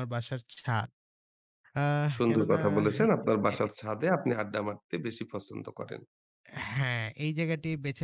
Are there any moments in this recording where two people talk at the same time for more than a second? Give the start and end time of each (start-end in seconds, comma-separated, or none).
none